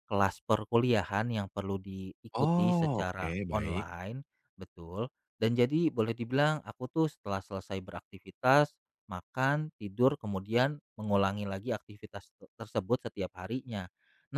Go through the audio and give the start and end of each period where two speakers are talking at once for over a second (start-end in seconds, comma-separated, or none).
2.3-3.9